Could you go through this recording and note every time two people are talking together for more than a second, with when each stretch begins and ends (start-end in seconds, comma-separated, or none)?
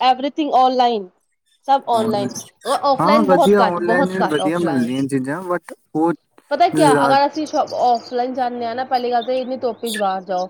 3.0-4.9